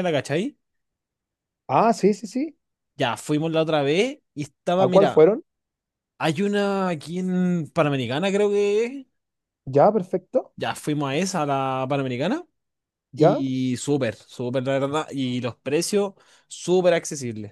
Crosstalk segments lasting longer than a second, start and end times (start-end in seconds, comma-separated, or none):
none